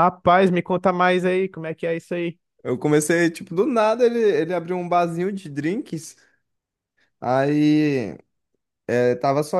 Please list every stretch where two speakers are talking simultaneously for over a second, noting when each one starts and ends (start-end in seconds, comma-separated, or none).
none